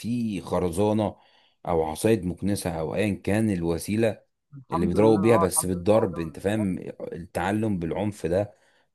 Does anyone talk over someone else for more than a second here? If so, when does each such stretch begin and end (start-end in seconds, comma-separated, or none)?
4.7-6.8